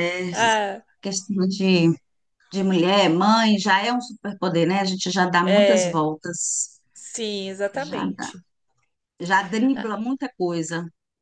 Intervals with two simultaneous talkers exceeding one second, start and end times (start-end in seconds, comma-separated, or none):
none